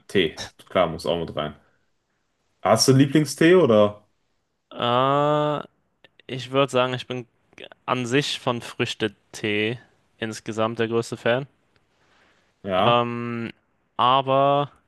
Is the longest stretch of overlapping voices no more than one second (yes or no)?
yes